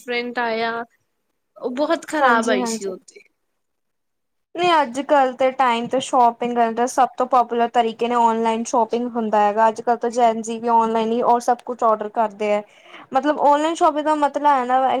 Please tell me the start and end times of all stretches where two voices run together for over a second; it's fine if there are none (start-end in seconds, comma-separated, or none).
none